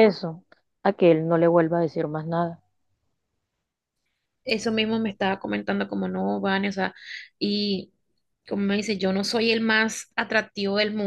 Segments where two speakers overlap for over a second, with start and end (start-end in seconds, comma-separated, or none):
none